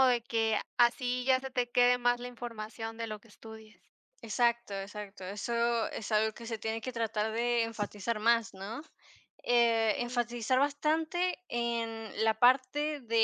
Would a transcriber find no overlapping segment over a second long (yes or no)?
yes